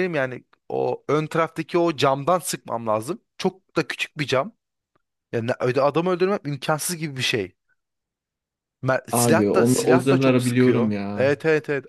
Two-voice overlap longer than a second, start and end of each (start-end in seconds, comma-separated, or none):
9.1-11.3